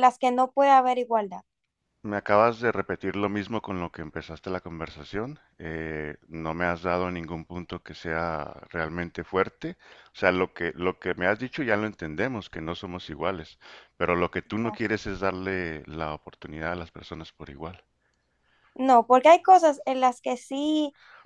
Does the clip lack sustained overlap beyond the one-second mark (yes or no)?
yes